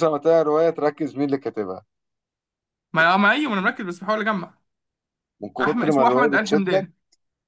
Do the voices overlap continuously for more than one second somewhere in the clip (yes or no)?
yes